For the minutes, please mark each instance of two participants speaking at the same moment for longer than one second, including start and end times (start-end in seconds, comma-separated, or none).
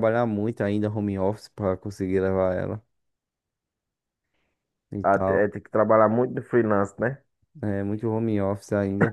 none